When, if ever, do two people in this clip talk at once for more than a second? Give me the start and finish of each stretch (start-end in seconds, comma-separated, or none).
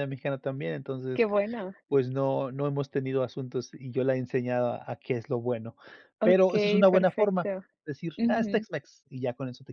6.2-7.5